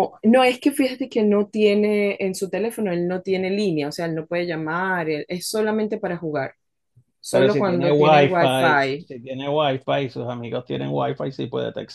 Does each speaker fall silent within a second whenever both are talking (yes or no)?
no